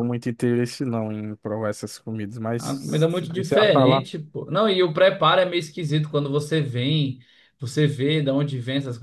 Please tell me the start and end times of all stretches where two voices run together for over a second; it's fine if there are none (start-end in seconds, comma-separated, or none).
2.6-4.0